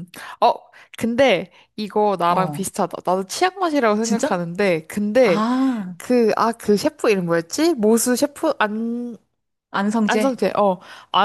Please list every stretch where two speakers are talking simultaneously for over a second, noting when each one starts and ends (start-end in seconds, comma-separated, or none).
none